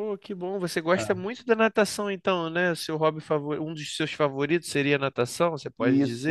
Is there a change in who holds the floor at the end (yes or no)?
yes